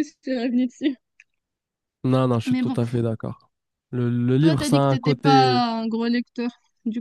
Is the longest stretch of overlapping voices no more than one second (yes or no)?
no